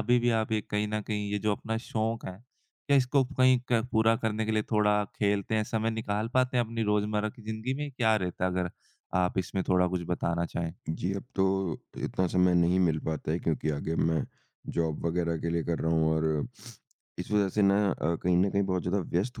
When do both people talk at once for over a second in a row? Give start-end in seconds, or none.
none